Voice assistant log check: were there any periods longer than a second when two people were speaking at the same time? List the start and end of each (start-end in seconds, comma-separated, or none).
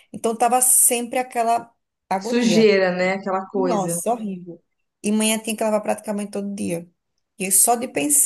none